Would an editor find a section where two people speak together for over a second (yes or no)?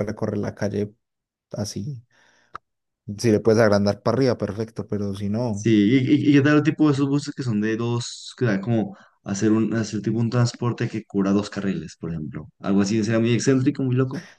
no